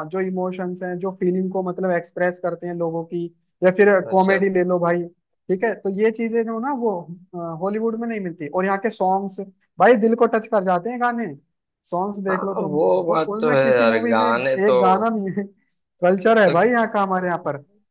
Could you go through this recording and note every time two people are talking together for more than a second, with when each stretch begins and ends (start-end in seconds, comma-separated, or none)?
12.3-14.8